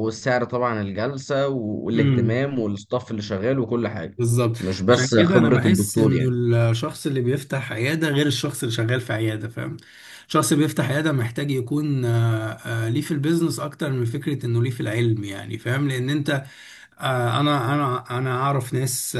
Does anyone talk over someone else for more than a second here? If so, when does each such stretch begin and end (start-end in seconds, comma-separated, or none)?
4.6-6.2